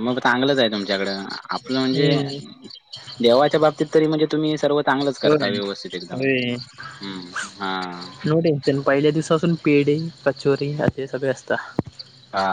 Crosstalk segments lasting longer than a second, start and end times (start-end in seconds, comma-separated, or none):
none